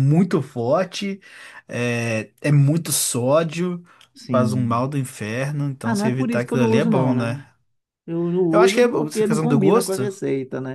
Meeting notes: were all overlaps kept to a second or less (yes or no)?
no